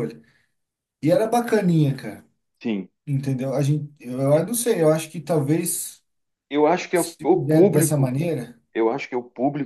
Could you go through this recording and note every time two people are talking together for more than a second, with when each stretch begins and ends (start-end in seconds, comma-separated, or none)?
6.9-8.2